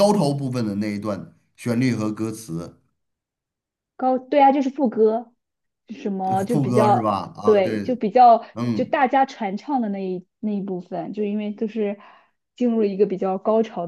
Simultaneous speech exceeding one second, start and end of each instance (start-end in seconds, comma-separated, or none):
6.2-7.8